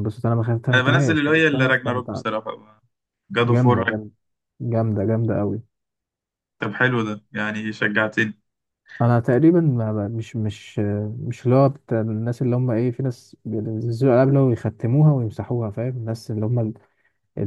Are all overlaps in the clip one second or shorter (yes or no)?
no